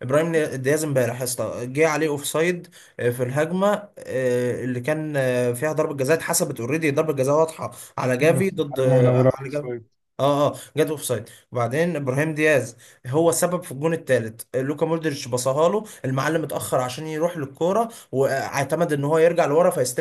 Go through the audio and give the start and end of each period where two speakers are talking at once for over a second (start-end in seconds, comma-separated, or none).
8.2-9.7